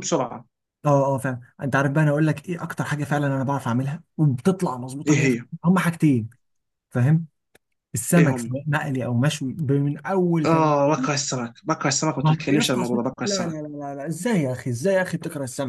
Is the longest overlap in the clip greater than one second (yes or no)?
yes